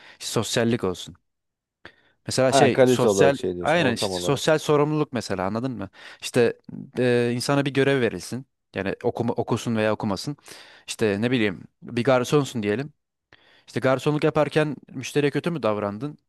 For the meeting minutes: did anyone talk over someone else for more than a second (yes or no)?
yes